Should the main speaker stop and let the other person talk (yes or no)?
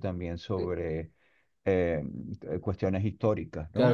yes